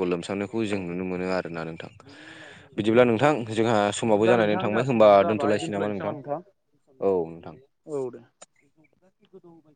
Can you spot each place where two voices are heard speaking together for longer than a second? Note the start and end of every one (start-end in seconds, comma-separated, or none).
4.0-6.0